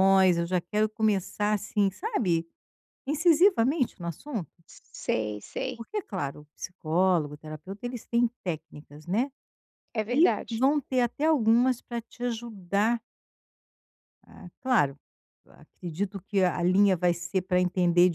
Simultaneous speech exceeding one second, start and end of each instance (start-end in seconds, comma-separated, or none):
none